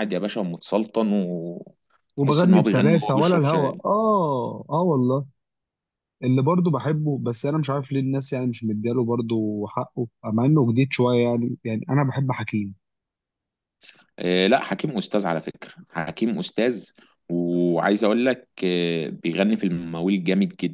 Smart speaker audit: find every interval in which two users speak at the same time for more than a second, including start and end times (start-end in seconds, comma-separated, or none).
2.2-3.8